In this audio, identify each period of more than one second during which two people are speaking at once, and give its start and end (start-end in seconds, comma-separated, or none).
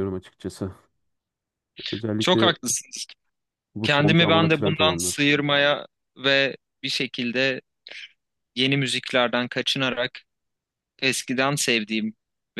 3.8-5.2